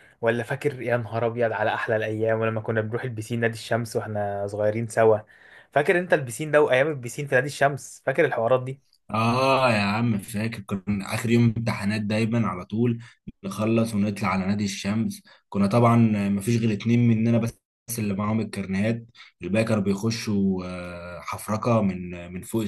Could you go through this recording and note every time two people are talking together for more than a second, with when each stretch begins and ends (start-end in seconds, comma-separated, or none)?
none